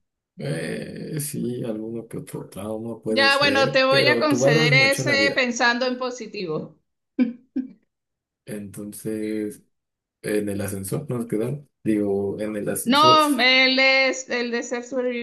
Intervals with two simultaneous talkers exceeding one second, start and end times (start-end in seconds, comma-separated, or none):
3.1-5.4